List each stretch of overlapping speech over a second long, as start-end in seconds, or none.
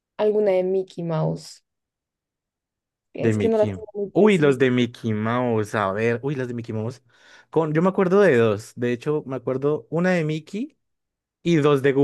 3.2-4.6